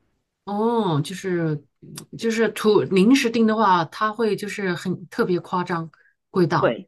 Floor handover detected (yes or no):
yes